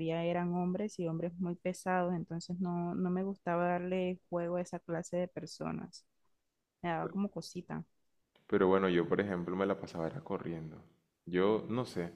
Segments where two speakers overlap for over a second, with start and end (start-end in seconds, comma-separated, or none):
none